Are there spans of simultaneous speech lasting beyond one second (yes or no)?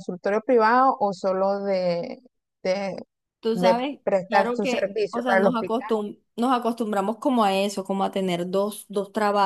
yes